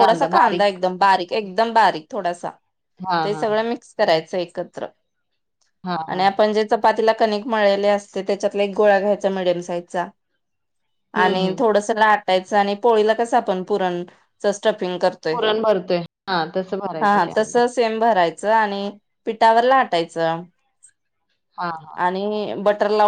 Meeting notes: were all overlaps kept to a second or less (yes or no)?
yes